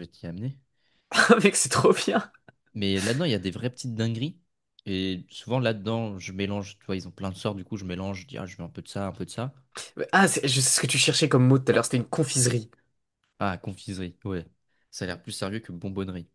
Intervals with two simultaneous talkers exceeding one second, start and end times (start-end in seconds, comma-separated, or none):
none